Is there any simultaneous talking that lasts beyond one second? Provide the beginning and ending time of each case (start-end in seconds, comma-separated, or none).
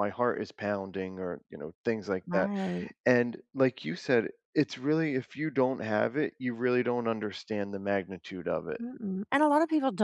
none